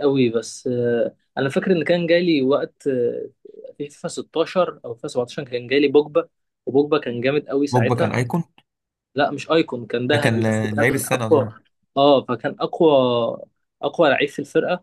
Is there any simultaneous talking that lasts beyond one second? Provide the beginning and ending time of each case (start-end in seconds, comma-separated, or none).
10.1-11.5